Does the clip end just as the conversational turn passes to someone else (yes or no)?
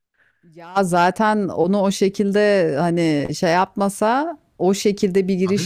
no